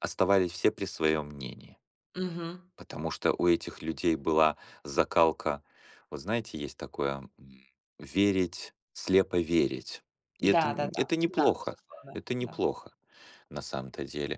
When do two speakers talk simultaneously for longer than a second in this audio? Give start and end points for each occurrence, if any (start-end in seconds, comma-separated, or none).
10.4-12.6